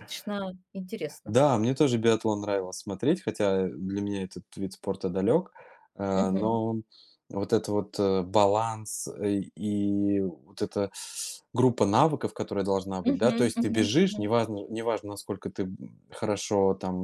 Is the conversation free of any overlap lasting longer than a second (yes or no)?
no